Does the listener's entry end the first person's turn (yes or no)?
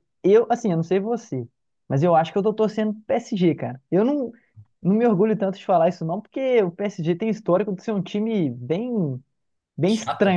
no